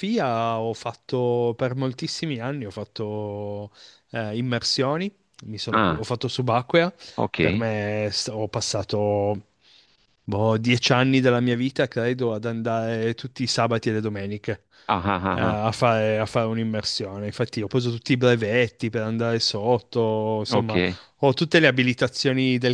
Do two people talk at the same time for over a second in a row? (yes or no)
no